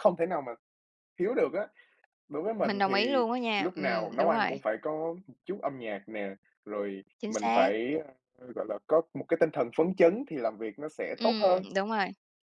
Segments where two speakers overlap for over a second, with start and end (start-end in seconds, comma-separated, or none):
2.6-4.5